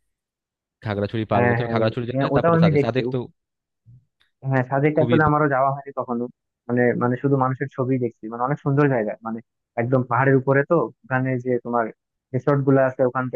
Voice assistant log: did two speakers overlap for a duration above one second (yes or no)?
yes